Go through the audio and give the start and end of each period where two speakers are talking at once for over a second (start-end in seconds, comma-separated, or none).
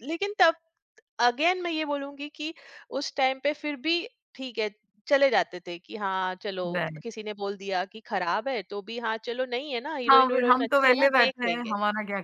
10.1-11.7